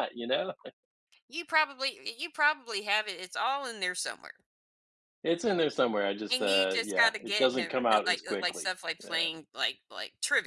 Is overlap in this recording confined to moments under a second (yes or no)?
no